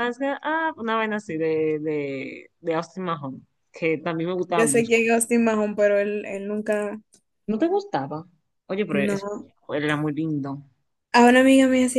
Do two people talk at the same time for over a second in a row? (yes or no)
no